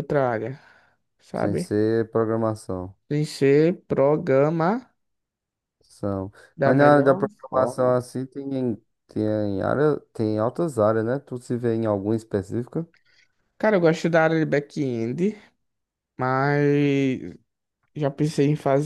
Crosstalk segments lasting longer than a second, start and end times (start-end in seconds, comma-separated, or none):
6.6-8.0